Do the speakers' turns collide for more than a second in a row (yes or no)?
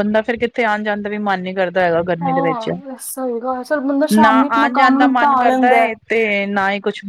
yes